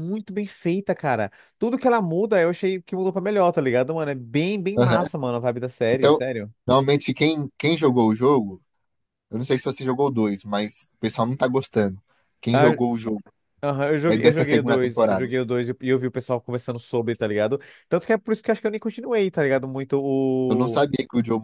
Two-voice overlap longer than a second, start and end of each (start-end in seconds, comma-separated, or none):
14.0-15.3